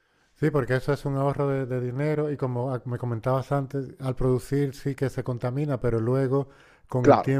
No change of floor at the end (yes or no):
no